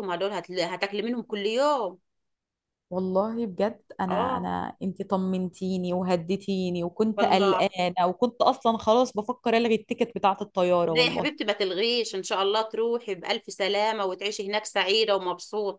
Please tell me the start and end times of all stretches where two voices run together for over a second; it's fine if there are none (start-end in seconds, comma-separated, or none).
none